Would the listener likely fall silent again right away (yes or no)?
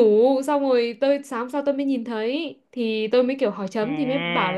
yes